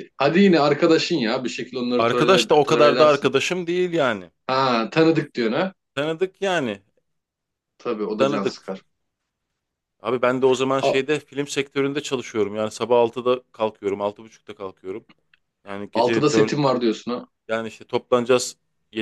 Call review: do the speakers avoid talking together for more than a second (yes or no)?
no